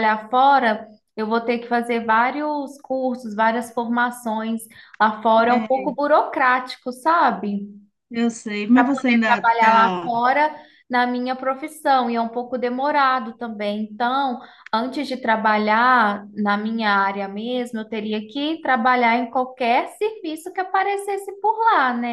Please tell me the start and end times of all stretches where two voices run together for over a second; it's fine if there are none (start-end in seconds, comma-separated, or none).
8.7-10.2